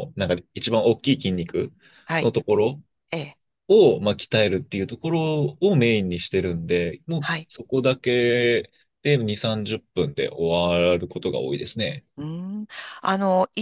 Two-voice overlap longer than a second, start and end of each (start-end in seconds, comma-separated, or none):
none